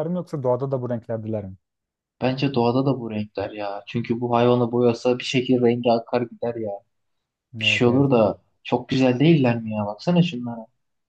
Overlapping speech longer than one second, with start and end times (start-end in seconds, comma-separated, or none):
none